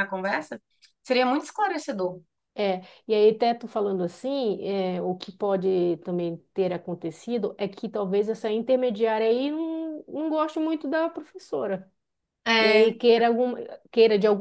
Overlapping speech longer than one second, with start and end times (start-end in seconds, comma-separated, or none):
none